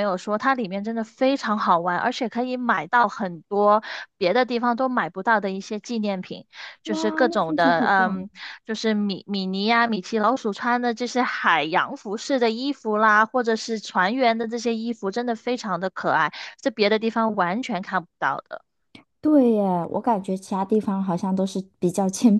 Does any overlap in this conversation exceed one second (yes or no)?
yes